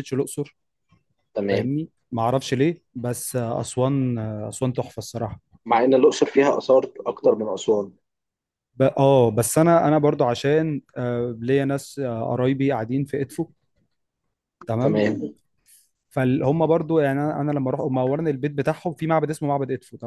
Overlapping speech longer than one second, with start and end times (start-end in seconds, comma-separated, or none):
none